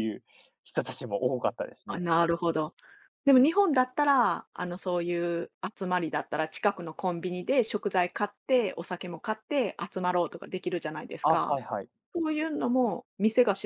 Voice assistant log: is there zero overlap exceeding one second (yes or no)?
yes